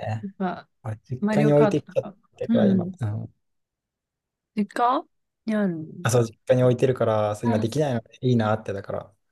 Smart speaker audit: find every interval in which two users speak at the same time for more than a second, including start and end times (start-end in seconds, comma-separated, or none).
1.2-3.0